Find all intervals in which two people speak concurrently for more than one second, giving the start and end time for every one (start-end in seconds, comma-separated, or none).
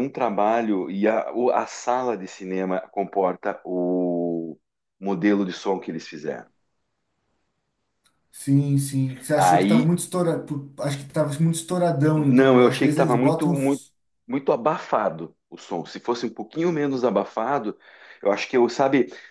12.2-13.8